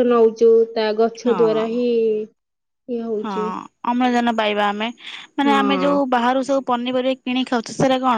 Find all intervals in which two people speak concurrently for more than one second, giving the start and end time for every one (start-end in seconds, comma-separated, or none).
none